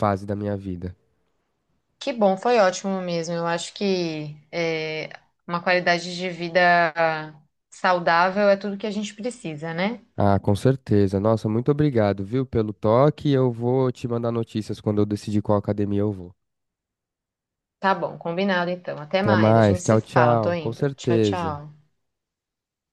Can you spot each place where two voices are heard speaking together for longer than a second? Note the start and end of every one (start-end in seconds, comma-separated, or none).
19.2-21.6